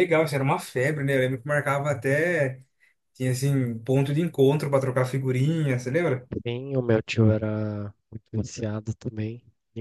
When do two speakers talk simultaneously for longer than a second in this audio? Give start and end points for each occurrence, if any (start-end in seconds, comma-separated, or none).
none